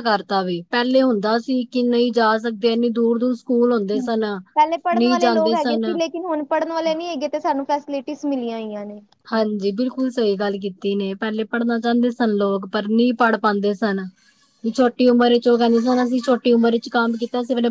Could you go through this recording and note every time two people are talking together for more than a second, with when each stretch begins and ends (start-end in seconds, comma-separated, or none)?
4.0-5.8